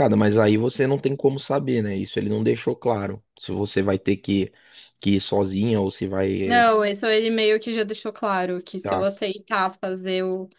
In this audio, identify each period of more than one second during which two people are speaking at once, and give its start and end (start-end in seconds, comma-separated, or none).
none